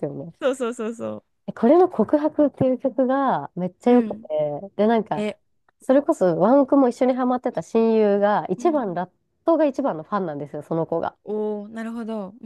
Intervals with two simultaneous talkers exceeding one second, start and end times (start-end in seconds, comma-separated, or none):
none